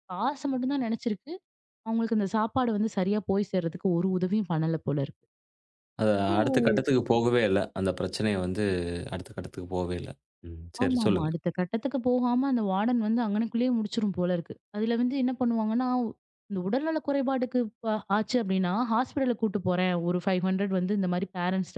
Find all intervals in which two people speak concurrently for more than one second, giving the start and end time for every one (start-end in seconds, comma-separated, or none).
none